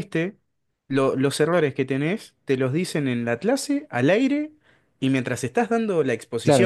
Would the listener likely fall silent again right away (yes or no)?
no